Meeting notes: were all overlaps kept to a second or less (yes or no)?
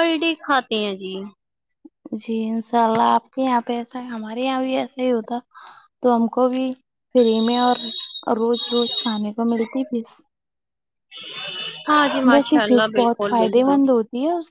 no